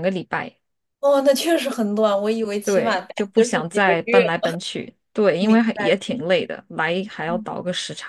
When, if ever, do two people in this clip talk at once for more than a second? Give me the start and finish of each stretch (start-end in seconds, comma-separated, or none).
2.6-4.2